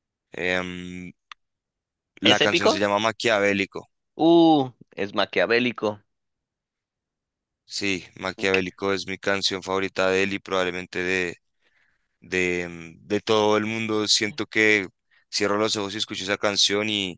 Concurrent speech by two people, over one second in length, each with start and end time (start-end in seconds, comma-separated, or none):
none